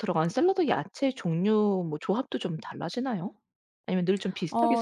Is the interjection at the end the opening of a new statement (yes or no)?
yes